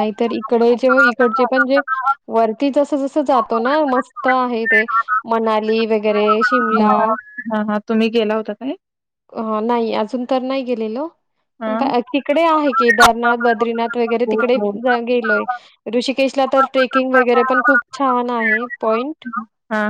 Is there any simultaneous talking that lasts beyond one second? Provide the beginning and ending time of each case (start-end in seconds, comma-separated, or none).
none